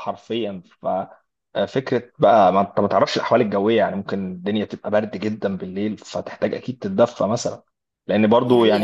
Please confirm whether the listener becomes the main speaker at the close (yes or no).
no